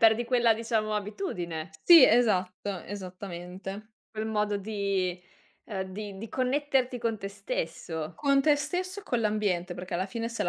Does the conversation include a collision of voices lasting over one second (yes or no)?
no